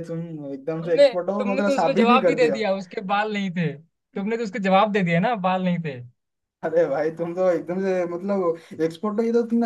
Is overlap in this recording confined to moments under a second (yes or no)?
no